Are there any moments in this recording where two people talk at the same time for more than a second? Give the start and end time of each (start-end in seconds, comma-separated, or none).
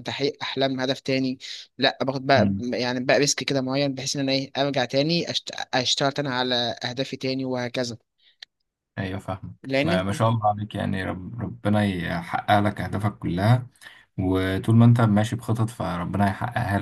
none